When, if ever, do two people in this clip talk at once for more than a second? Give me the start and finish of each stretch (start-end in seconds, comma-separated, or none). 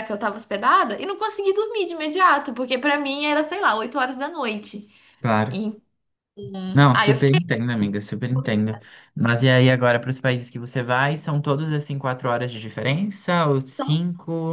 none